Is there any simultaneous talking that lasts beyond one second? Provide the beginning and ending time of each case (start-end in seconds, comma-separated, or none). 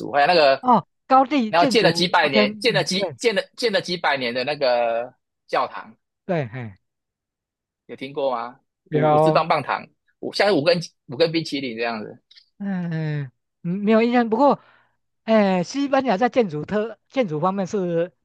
1.5-3.2